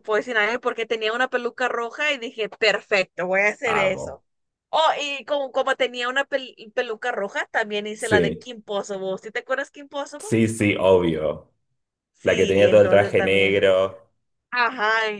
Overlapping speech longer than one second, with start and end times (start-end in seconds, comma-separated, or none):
12.2-13.7